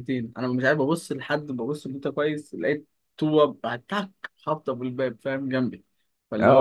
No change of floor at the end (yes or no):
no